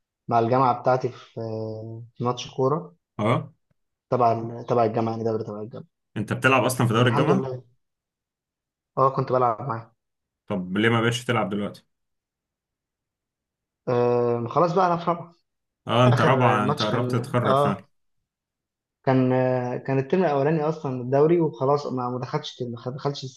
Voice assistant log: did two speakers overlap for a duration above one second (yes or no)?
yes